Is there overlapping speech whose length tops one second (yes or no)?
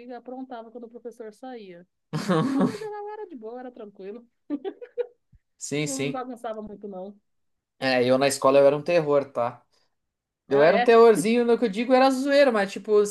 no